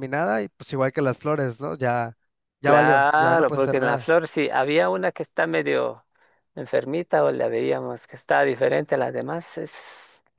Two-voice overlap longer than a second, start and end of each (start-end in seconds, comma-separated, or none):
2.6-4.1